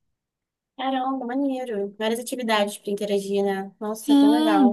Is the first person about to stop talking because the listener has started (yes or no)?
yes